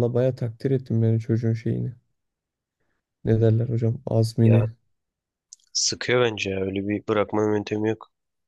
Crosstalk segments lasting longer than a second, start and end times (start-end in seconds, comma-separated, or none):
none